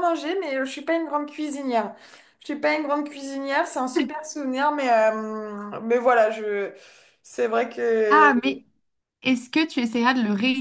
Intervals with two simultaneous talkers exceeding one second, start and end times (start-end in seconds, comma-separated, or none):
none